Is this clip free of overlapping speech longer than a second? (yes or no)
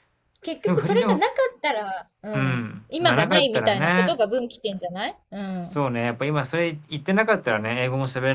no